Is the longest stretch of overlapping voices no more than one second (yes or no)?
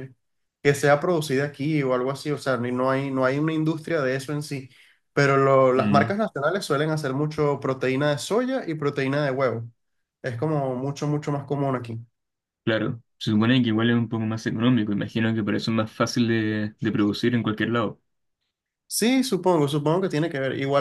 yes